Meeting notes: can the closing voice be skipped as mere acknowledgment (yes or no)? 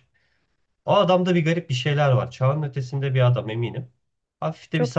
yes